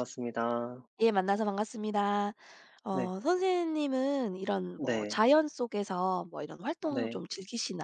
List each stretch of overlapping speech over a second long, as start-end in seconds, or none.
none